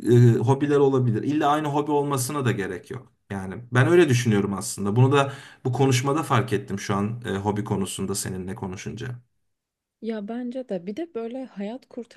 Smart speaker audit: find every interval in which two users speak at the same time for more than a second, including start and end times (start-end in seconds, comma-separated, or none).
none